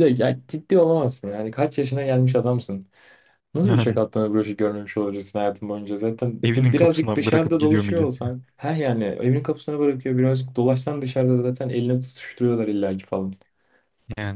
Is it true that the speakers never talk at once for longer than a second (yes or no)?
no